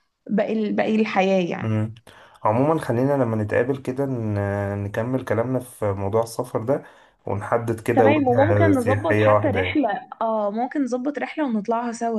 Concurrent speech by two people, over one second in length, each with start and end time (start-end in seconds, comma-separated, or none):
7.9-9.8